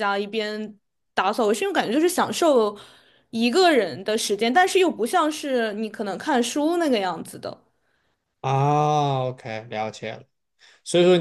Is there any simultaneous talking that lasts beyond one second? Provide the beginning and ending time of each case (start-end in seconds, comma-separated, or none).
none